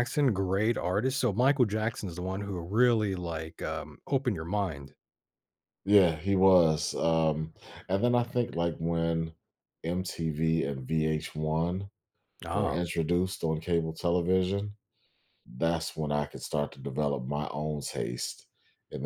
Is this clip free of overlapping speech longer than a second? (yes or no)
yes